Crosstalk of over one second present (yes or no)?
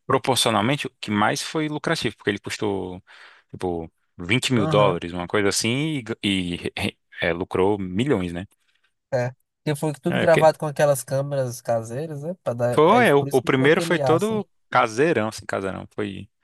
yes